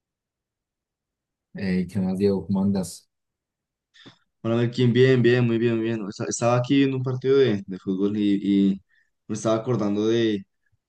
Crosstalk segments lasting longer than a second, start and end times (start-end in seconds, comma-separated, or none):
none